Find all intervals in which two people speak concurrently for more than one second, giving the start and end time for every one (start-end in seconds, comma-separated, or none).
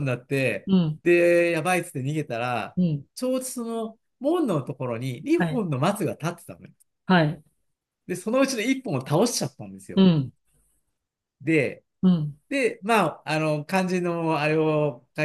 none